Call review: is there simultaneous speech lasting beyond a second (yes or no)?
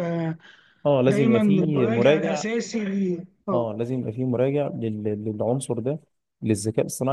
yes